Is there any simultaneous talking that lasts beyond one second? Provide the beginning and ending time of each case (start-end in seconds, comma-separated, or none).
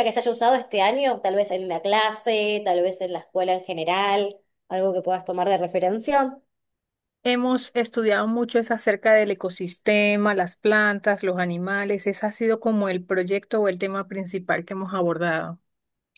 none